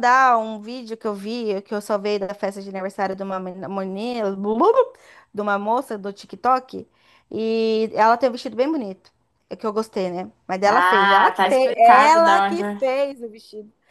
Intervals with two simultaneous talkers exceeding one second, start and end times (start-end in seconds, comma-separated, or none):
10.7-12.6